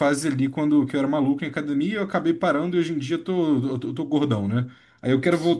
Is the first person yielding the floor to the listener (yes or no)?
no